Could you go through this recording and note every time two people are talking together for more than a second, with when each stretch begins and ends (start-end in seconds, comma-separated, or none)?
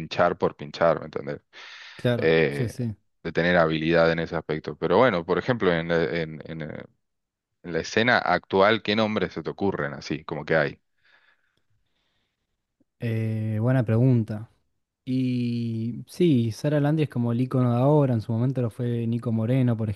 none